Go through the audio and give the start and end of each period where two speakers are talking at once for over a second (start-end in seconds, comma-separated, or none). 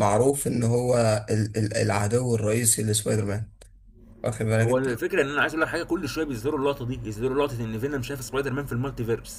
none